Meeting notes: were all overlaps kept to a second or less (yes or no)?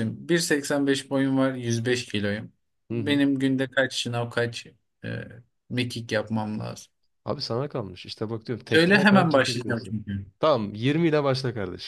no